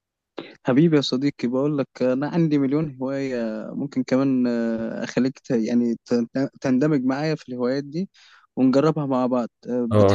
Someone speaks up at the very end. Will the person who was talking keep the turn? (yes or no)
no